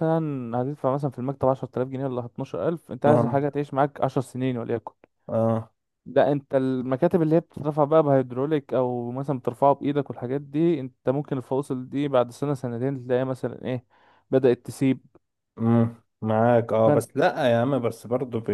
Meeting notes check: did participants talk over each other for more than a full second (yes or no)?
no